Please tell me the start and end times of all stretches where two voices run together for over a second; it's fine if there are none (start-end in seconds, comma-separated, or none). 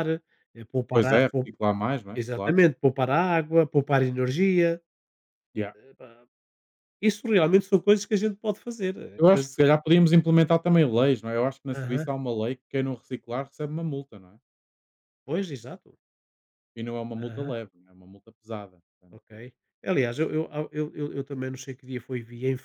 none